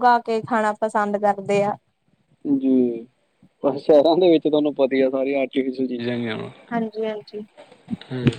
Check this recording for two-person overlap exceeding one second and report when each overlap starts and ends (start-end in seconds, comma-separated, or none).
none